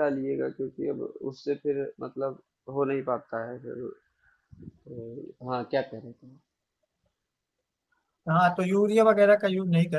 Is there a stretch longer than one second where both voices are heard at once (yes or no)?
no